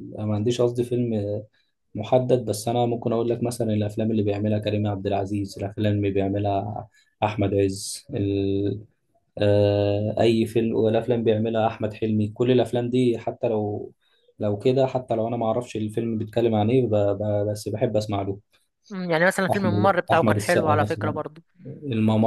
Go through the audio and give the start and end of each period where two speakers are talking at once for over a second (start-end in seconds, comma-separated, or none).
19.5-21.2